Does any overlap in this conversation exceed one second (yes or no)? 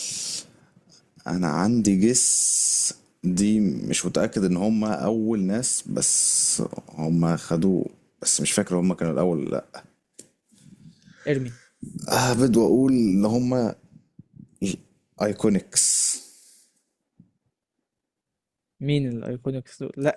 no